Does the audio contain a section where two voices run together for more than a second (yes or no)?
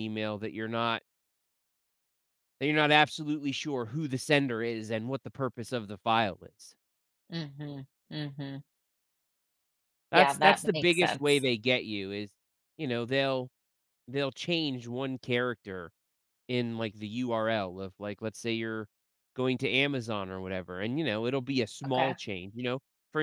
yes